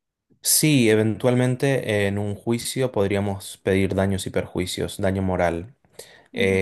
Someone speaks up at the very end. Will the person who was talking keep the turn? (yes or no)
no